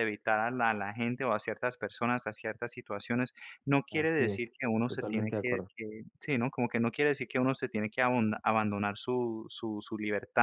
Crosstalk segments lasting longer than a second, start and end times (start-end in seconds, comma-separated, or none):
3.9-5.7